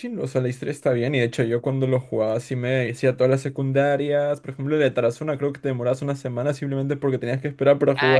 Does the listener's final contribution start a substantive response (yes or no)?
yes